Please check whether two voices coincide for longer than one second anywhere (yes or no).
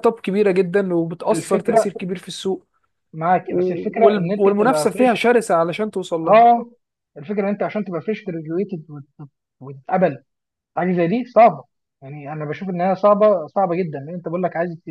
yes